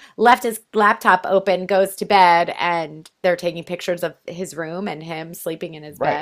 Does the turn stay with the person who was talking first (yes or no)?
no